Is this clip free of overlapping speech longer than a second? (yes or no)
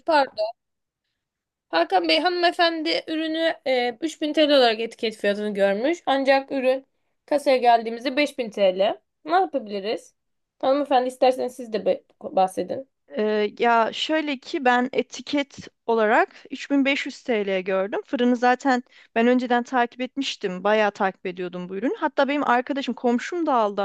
yes